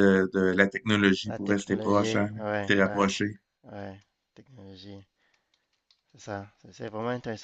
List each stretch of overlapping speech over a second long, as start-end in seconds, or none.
1.3-3.1